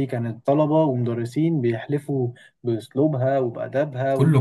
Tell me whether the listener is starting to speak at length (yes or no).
yes